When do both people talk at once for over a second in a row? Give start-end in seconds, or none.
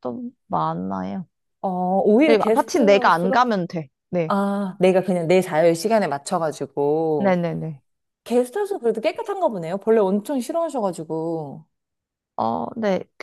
2.2-3.5